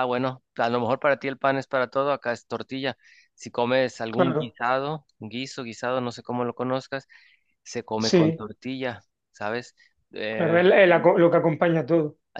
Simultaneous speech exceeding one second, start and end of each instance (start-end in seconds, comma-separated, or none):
none